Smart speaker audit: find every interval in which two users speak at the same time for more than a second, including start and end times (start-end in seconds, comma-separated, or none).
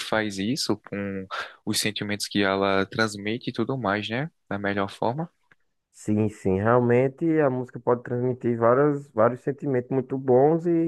none